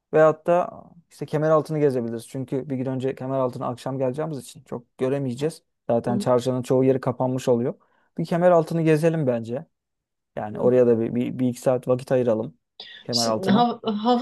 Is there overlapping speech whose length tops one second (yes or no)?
no